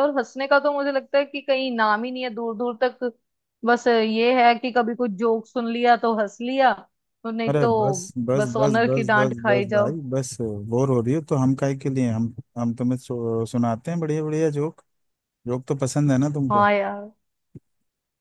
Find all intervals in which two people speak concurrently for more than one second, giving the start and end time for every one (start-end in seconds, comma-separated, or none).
7.5-10.0